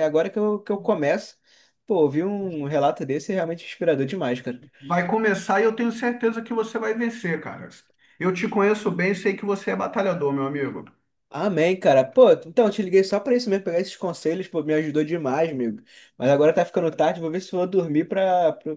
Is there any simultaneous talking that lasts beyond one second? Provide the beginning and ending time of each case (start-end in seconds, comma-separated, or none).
none